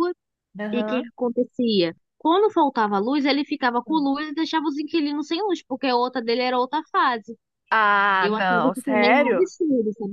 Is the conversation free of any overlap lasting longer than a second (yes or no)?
no